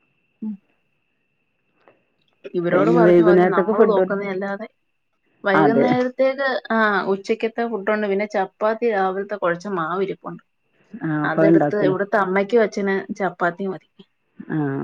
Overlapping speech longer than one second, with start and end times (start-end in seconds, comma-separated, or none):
2.7-4.1